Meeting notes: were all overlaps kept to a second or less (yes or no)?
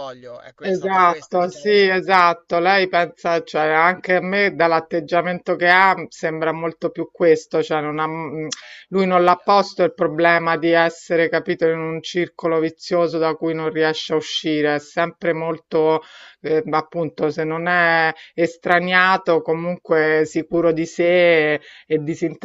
no